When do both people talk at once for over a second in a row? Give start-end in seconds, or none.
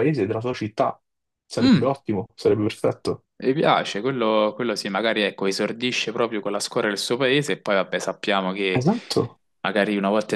none